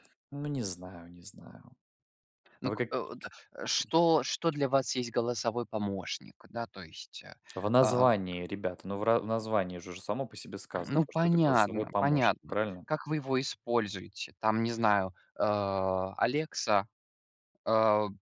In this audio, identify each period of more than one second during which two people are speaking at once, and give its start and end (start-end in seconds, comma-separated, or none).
10.9-12.8